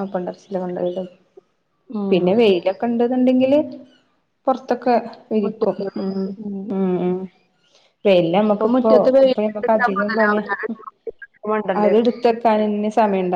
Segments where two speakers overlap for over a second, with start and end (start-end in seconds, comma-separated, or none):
8.5-10.4